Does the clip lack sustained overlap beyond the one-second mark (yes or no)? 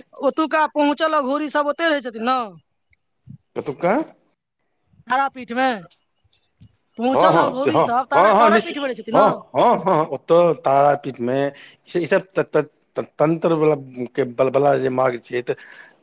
no